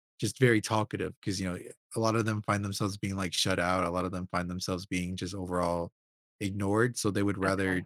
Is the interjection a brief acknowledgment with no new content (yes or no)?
yes